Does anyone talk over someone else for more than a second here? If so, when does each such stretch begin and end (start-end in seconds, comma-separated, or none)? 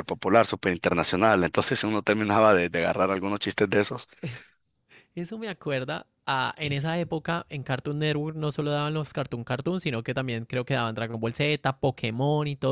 none